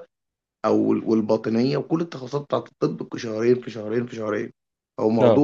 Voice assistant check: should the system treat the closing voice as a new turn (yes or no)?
no